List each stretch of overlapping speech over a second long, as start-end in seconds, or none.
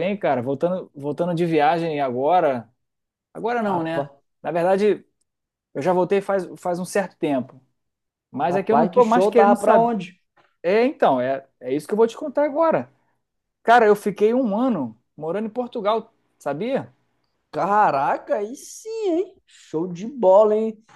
8.5-9.9